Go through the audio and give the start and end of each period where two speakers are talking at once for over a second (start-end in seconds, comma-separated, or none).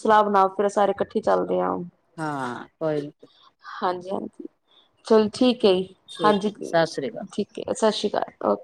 none